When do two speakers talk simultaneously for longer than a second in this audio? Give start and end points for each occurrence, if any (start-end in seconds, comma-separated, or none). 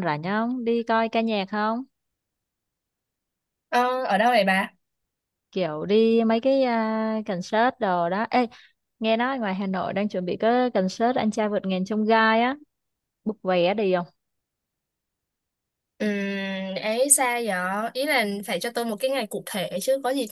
none